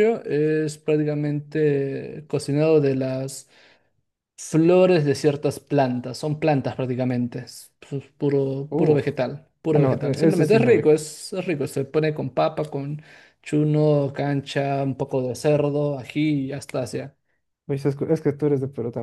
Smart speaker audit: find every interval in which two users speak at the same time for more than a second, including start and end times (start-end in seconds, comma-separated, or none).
9.7-10.9